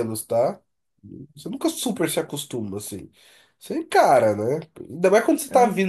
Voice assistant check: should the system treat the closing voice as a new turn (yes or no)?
no